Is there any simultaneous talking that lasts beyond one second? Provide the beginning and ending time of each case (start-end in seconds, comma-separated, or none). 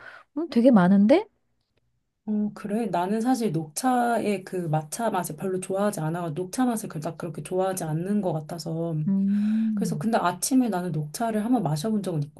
none